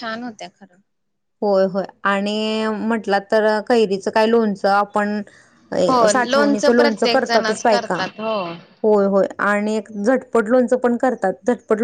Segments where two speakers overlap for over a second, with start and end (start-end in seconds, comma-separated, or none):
6.1-8.0